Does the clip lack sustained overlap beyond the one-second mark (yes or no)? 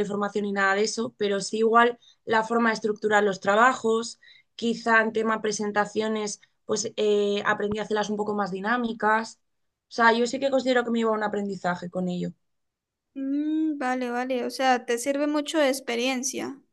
yes